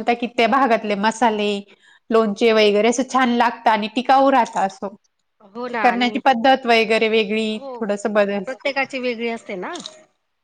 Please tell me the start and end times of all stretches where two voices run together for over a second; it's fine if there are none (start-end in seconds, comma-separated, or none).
none